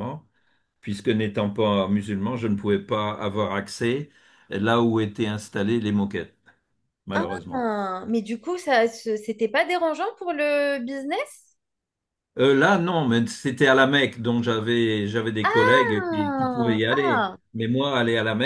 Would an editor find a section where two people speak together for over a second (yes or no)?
yes